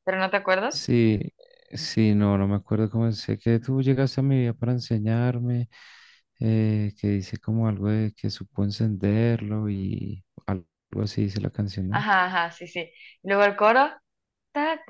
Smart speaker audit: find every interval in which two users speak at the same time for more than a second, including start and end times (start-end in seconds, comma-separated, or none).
none